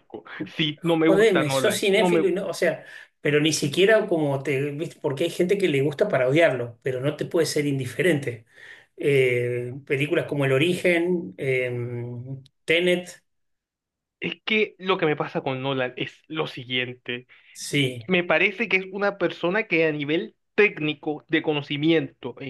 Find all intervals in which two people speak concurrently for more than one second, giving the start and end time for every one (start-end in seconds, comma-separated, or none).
1.1-2.3